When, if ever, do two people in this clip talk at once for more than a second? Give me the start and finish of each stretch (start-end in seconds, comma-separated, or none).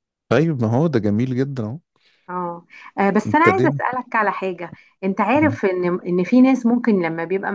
none